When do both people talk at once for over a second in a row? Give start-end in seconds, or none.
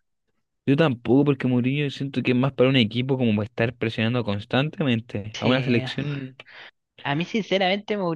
none